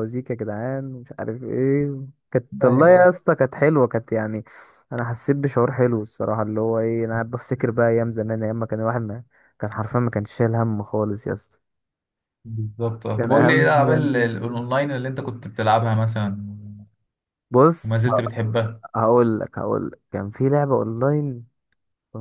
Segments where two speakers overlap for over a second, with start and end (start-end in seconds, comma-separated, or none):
13.2-14.7